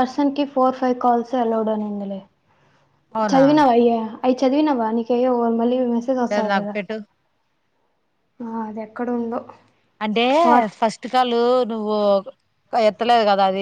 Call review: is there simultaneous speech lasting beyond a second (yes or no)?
no